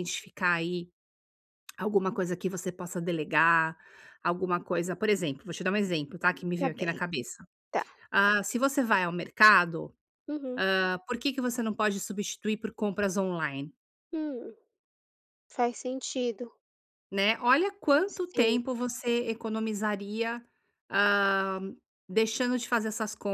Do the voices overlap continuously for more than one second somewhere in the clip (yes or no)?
no